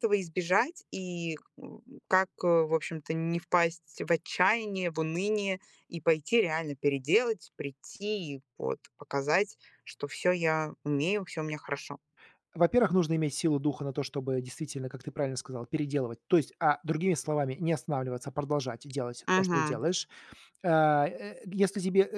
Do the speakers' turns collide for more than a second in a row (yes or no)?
no